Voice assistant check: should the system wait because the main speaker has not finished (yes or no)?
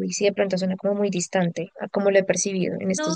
no